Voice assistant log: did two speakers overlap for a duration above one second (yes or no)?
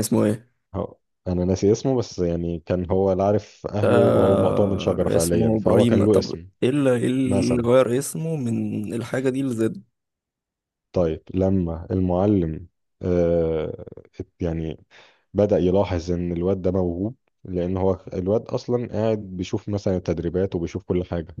yes